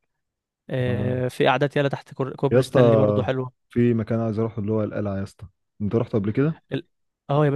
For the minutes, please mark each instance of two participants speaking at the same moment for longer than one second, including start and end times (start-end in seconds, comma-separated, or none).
none